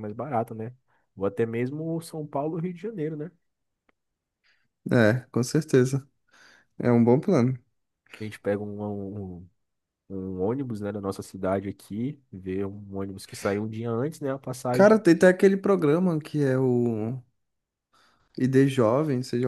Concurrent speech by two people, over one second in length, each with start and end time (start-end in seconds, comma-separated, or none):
none